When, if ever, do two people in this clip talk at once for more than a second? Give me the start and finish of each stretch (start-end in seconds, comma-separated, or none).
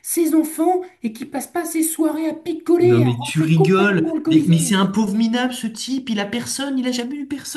2.8-4.9